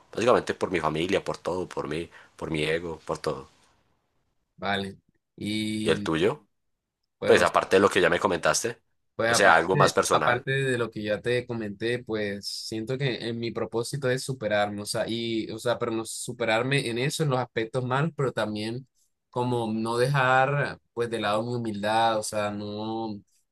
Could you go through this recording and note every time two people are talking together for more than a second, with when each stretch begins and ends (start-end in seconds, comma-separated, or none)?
9.2-10.5